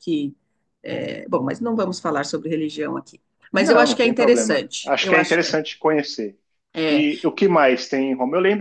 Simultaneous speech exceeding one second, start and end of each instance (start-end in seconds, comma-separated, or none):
3.6-5.6